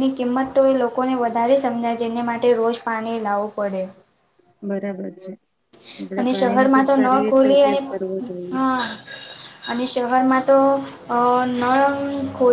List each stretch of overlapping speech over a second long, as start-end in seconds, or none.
6.2-7.8